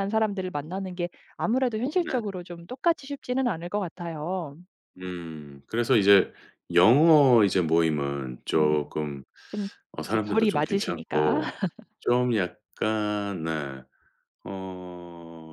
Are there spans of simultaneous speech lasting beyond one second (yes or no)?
yes